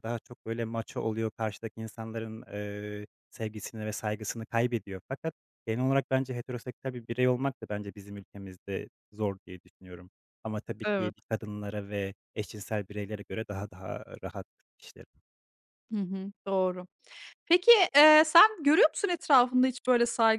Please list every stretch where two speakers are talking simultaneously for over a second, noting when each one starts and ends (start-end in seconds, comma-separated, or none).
none